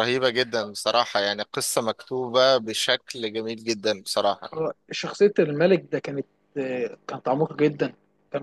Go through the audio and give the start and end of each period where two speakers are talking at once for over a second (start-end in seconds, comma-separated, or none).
none